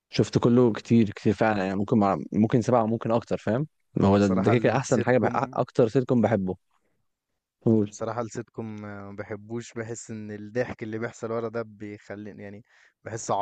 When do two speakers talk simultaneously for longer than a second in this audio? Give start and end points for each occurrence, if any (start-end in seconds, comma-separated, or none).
4.0-5.6